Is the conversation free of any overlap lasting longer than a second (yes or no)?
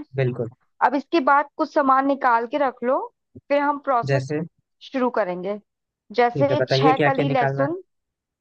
no